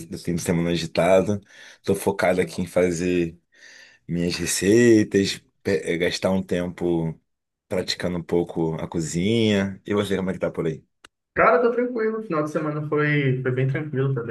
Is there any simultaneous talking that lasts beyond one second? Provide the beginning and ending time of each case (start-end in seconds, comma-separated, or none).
none